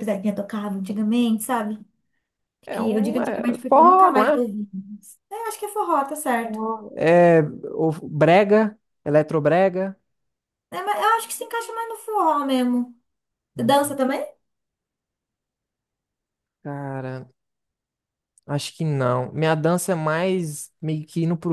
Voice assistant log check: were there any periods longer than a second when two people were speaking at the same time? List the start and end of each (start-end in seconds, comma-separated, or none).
2.7-4.4